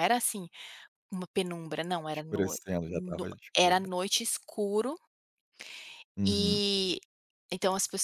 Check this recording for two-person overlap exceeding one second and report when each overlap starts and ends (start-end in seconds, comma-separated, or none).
2.1-3.9